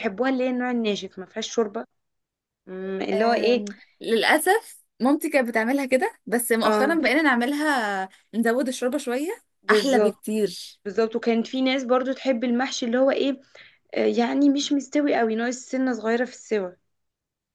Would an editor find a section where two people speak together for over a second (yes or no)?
no